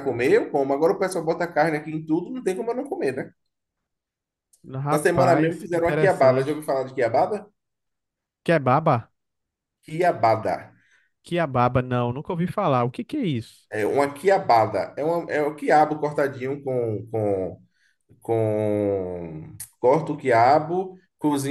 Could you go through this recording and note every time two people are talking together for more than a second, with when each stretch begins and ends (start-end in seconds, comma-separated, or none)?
4.9-6.7